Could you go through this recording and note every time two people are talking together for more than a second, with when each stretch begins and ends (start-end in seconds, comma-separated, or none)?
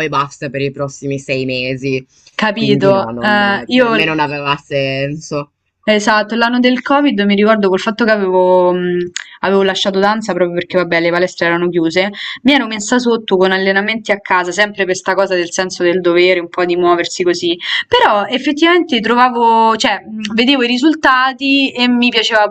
2.5-4.2